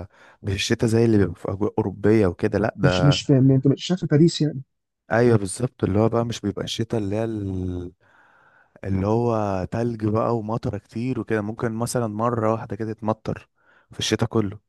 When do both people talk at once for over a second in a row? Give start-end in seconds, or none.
none